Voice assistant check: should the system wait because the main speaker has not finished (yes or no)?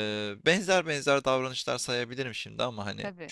yes